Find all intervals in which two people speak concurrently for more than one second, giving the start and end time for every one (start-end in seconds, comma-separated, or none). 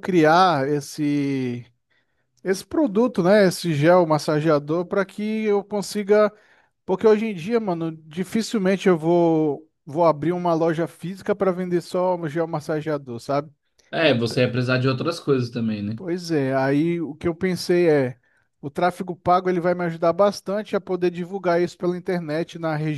none